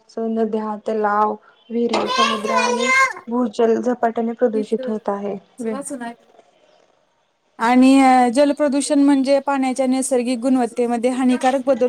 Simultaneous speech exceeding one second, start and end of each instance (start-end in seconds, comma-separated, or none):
none